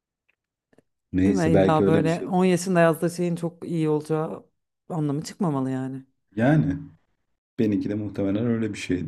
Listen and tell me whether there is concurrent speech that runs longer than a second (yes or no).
yes